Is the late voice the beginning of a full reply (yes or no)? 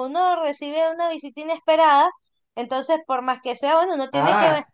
yes